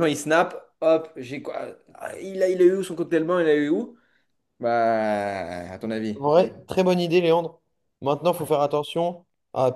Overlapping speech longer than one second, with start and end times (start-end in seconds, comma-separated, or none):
none